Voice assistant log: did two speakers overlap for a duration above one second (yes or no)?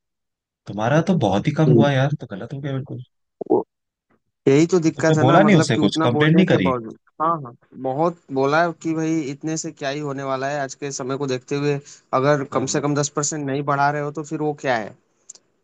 yes